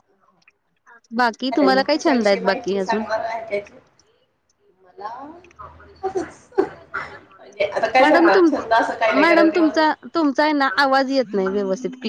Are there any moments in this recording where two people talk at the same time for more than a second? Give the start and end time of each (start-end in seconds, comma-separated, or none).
1.5-3.0